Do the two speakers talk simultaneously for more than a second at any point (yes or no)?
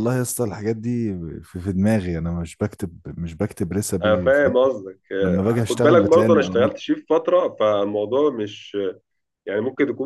yes